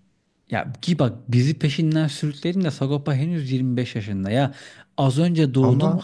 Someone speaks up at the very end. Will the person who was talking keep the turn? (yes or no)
yes